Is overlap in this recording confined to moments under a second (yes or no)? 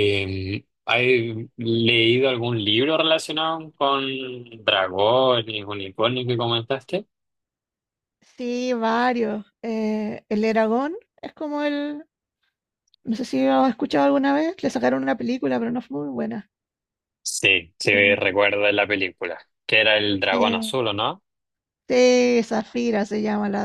yes